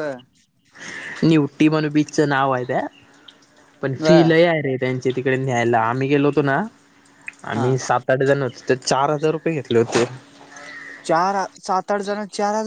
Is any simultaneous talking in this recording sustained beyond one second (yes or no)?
no